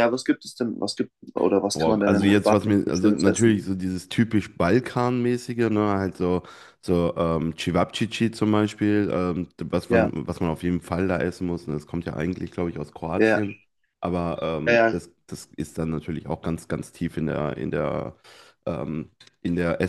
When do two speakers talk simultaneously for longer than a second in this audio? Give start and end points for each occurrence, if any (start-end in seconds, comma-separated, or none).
1.7-3.6